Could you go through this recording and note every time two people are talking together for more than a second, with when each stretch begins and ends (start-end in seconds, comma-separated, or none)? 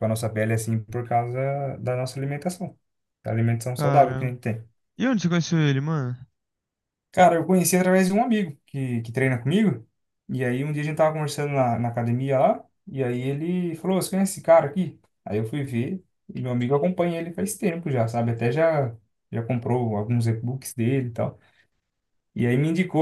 none